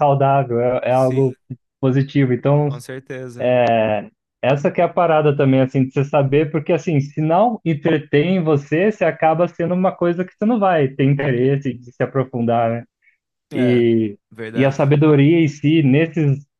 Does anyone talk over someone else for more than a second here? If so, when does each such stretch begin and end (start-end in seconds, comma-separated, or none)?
none